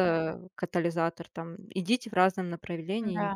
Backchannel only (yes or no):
yes